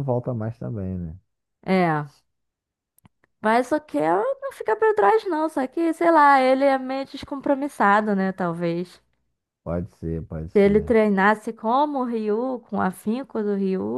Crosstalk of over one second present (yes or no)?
no